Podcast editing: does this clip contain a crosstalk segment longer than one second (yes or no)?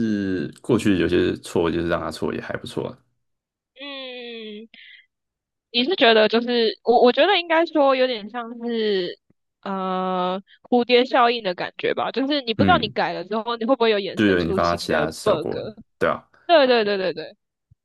yes